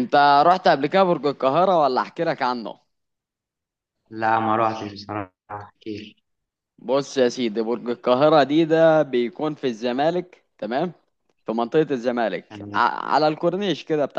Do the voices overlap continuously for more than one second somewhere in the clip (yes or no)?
no